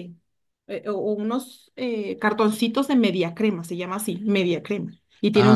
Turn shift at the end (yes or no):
no